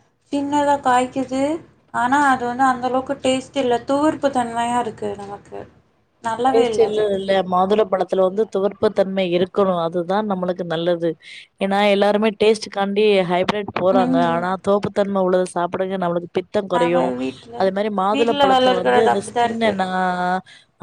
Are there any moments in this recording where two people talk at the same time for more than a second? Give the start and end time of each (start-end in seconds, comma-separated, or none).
18.2-19.7